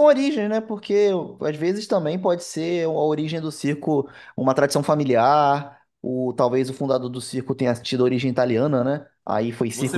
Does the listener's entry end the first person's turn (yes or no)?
yes